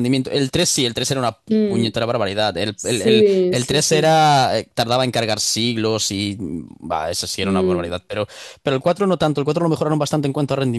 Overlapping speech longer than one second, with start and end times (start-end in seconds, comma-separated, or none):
2.7-4.1